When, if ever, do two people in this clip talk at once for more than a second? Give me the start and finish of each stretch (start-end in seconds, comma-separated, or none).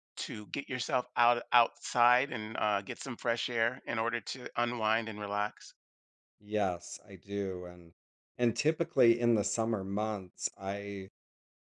none